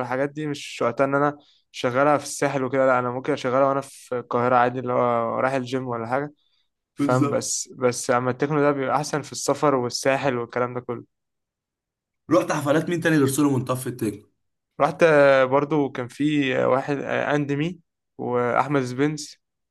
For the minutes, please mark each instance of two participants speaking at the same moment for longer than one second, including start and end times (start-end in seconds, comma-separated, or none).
none